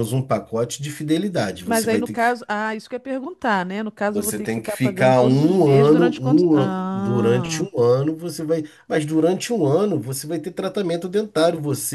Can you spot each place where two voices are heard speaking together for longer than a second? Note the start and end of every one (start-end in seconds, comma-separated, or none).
4.1-7.7